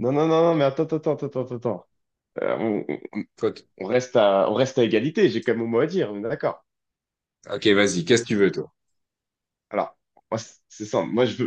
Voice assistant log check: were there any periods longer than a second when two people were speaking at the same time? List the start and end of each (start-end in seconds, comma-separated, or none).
none